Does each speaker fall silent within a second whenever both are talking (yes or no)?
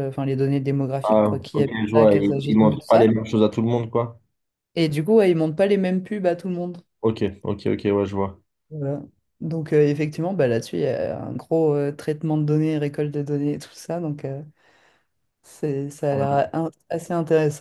no